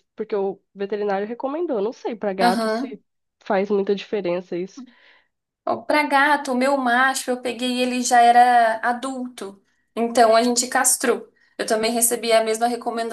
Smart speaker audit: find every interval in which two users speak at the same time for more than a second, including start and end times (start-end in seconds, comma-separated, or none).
none